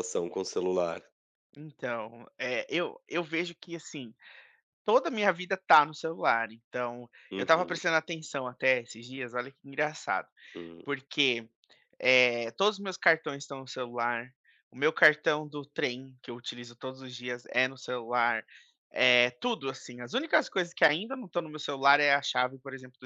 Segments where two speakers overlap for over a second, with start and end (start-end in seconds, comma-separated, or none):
none